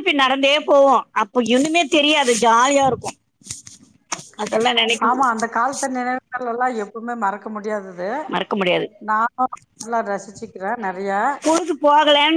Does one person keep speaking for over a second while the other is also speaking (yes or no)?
no